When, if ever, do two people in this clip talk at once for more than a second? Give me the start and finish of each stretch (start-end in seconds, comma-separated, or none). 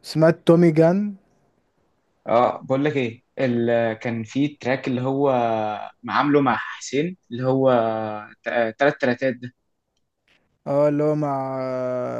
none